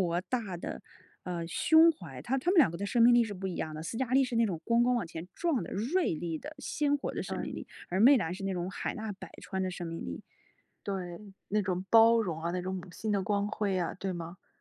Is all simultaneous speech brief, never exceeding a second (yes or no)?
yes